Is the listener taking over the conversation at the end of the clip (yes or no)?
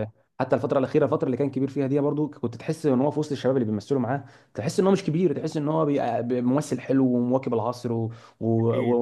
no